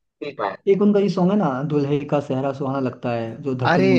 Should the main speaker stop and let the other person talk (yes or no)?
yes